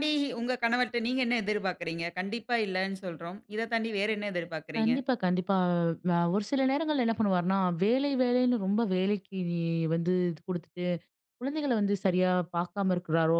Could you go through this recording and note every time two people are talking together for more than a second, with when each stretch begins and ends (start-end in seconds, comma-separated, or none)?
none